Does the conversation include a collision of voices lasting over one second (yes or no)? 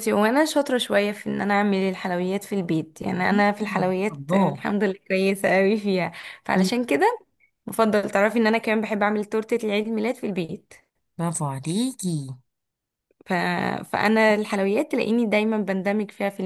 yes